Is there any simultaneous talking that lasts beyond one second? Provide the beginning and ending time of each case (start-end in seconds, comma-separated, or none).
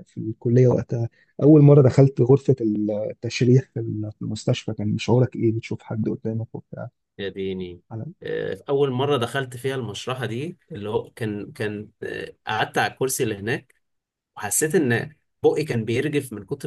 none